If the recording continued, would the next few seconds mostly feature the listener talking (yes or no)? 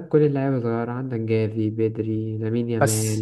no